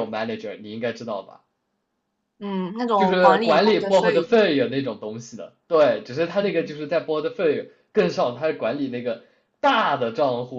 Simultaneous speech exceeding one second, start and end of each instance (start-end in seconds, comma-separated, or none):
2.9-4.4